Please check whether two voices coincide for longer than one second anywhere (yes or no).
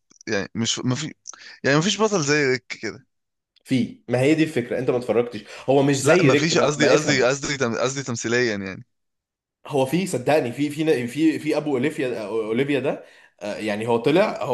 yes